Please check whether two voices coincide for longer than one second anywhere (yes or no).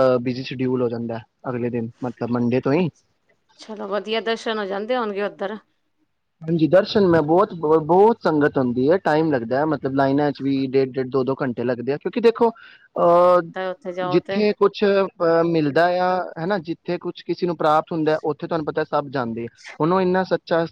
no